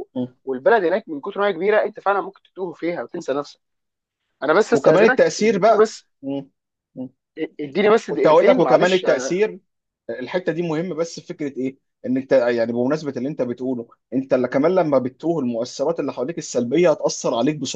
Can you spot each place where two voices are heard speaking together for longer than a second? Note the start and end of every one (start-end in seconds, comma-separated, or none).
4.7-6.0, 8.1-9.4